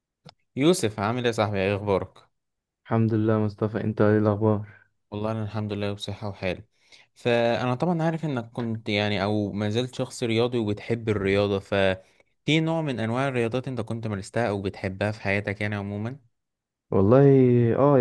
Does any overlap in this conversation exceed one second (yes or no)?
no